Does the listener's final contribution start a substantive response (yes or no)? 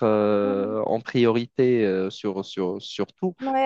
yes